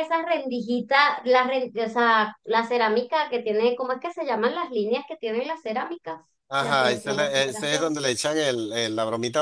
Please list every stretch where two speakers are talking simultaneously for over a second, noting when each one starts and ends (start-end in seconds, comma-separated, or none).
6.6-8.0